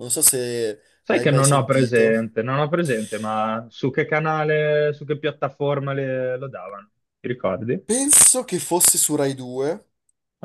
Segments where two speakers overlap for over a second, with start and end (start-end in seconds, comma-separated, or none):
1.0-2.2